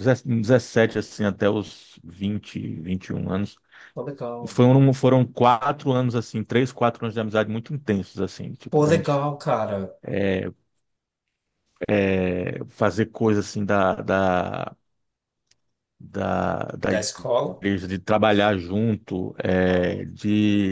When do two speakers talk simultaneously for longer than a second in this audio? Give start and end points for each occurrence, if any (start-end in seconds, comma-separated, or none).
none